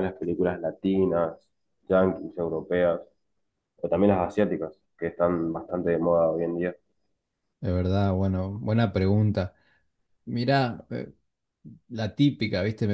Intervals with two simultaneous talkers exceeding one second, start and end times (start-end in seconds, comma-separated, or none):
none